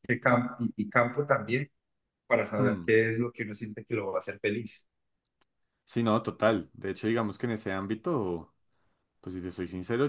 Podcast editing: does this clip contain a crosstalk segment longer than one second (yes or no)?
no